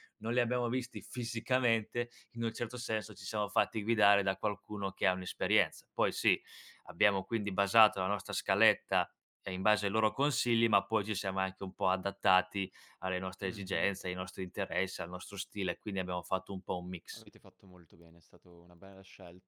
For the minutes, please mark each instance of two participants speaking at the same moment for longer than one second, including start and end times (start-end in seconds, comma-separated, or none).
none